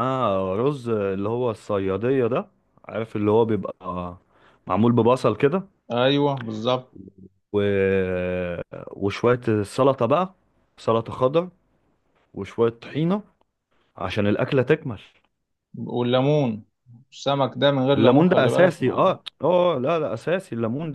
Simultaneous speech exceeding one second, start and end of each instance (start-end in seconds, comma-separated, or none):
18.0-19.2